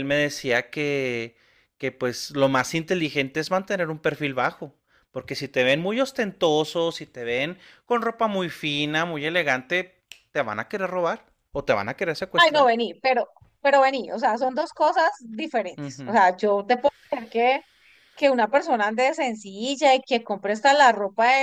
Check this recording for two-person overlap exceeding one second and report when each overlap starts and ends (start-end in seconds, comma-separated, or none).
none